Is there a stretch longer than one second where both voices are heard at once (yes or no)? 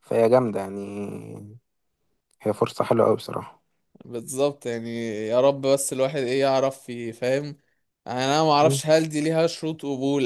no